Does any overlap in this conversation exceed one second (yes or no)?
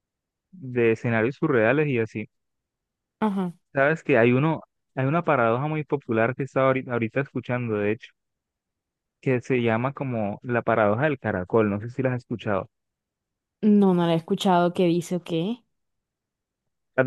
no